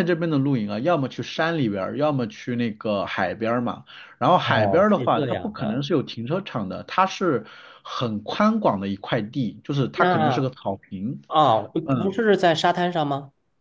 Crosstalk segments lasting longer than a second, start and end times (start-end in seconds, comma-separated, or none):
4.4-5.8